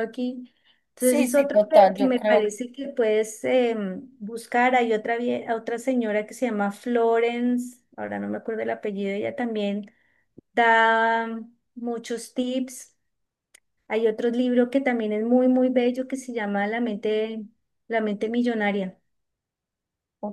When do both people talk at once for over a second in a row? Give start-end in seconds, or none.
1.0-2.5